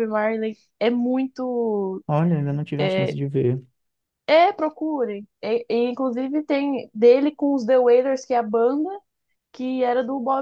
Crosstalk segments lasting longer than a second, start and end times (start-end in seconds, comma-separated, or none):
none